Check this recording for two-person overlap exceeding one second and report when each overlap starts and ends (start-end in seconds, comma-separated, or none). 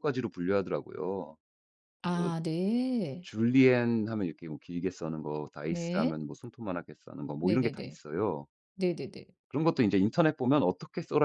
none